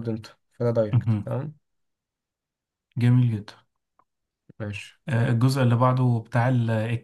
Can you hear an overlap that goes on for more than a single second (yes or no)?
no